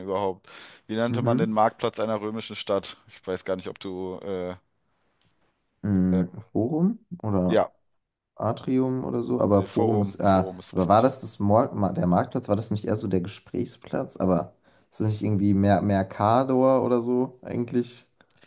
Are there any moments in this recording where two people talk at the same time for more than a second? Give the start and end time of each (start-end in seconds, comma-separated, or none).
9.5-11.1